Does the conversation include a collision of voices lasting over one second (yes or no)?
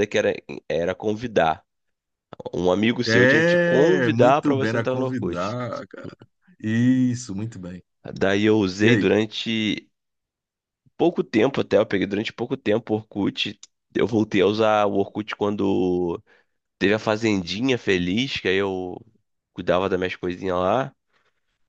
yes